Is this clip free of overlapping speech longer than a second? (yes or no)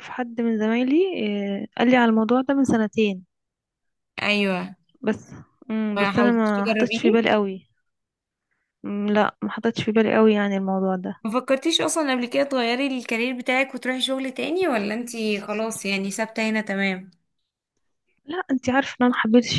no